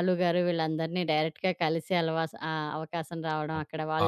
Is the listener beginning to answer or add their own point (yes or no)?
no